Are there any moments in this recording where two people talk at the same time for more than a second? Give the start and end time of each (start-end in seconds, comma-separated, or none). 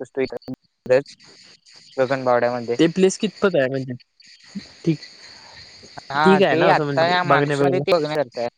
6.2-7.8